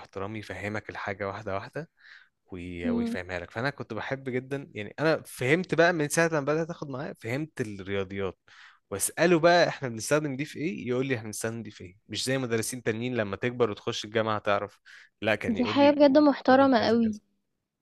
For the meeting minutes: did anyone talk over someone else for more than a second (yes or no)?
yes